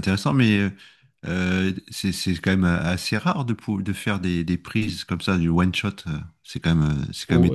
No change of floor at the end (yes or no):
no